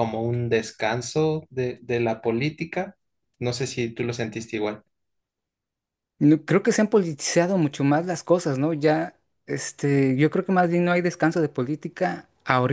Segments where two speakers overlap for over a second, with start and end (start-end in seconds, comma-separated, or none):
none